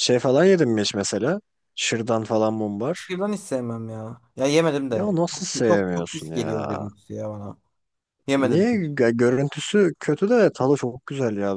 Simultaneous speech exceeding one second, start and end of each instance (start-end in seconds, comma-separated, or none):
4.9-6.9